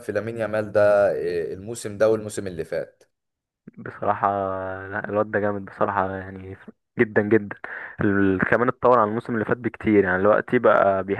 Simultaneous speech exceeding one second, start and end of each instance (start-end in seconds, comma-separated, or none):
none